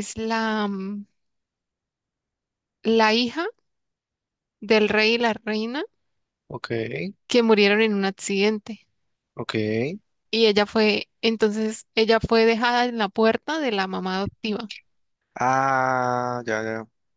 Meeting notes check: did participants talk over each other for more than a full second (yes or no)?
no